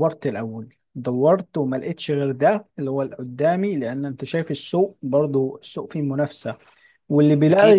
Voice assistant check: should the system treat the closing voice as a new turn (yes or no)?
no